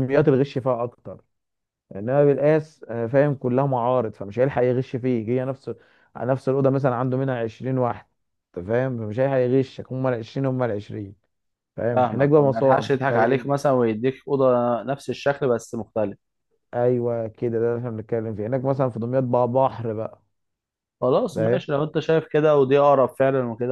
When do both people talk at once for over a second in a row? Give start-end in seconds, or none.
11.9-13.5